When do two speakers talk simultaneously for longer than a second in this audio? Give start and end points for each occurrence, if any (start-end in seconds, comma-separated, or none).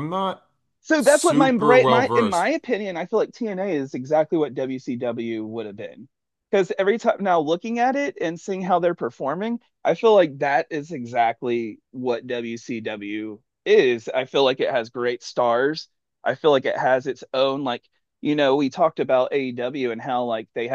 1.0-2.5